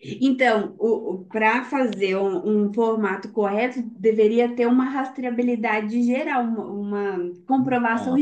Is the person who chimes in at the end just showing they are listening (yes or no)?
yes